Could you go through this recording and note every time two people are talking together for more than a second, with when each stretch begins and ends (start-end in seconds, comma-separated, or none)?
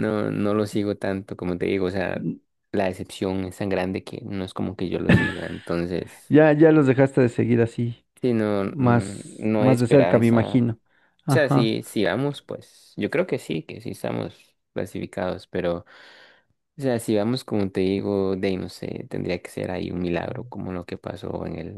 8.6-10.6